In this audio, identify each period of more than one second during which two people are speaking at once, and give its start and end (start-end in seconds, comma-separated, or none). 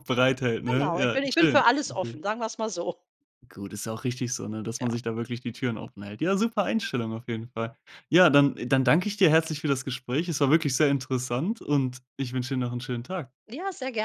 0.7-2.2